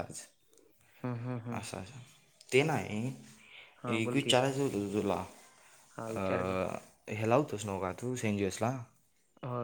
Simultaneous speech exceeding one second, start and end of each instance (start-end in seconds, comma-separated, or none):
none